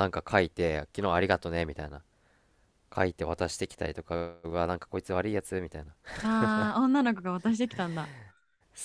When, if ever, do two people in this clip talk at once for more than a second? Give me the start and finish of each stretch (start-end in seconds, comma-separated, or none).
none